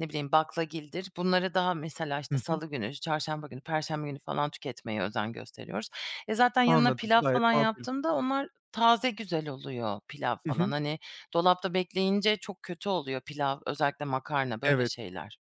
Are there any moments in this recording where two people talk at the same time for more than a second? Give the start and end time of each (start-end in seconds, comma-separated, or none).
6.7-7.9